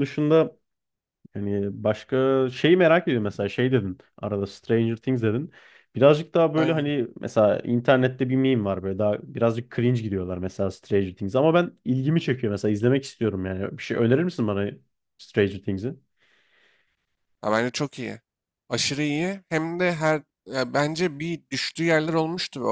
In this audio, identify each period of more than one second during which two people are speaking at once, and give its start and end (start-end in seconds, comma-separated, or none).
none